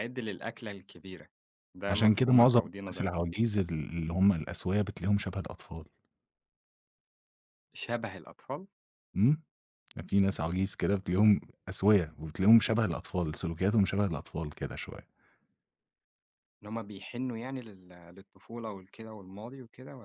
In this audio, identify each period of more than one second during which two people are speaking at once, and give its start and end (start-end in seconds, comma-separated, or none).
1.9-3.2